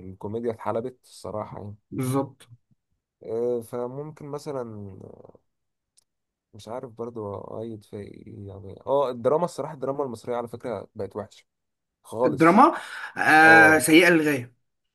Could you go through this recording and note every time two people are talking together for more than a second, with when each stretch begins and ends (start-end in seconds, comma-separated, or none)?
none